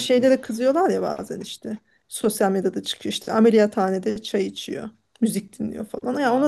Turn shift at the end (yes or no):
no